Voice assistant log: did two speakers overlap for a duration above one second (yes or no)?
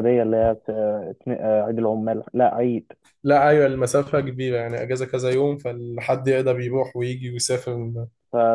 no